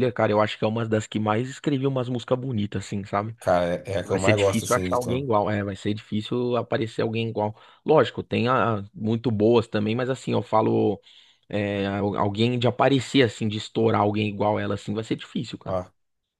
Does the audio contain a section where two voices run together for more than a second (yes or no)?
yes